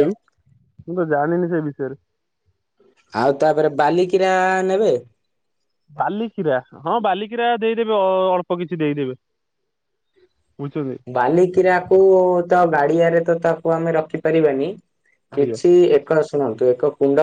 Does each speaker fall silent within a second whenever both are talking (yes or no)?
yes